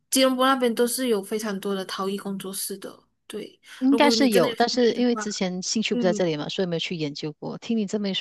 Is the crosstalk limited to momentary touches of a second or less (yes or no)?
no